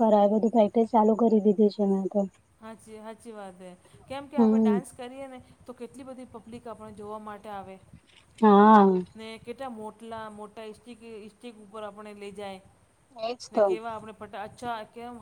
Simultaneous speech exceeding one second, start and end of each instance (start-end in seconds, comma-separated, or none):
none